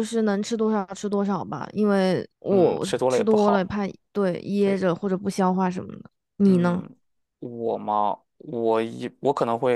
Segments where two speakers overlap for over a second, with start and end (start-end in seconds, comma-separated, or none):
2.5-3.8